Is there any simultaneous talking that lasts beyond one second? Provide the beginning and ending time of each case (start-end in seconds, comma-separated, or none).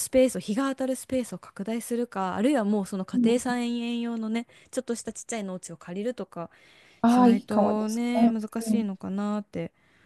7.0-8.9